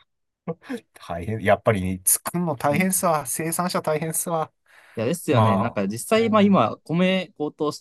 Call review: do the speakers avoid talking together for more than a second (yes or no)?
no